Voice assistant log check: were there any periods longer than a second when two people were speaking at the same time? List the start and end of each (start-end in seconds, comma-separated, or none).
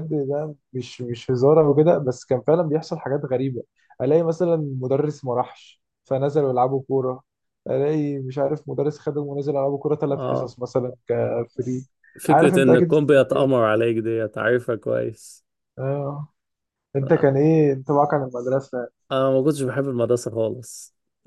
12.3-13.7